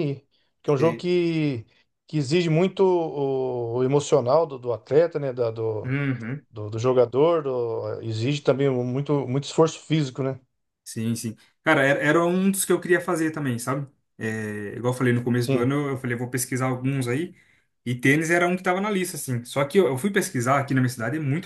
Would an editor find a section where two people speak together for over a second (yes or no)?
no